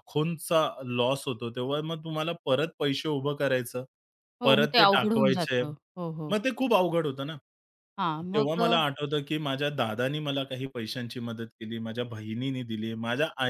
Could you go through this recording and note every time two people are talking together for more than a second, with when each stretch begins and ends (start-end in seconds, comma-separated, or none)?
4.4-5.6